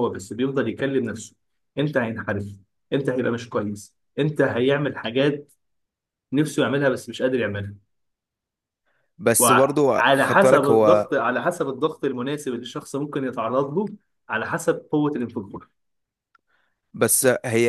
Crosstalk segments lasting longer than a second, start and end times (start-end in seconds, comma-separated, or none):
9.4-11.1